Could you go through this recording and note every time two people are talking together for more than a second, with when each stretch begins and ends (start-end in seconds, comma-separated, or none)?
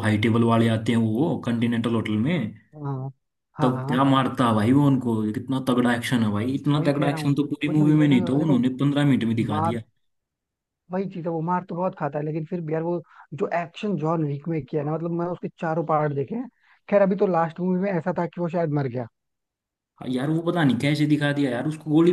6.8-8.6